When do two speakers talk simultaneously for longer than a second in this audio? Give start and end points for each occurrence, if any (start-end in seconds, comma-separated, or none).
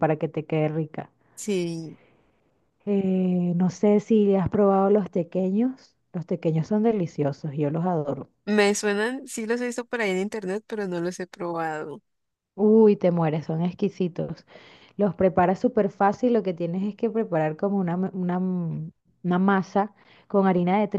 none